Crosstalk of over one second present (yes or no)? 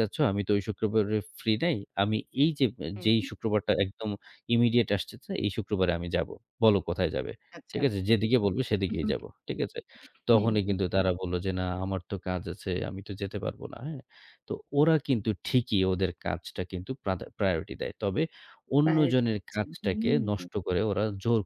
yes